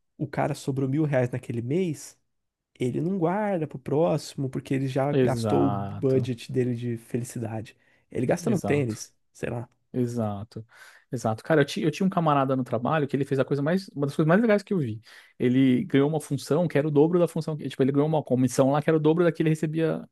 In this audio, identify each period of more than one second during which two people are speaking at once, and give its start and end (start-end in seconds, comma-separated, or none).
5.1-6.3